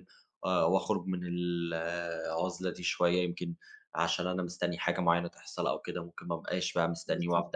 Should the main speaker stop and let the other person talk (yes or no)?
no